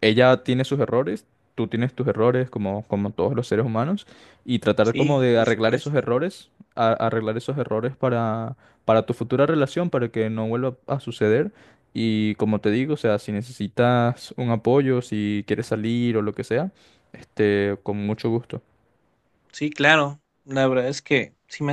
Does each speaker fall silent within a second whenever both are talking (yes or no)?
no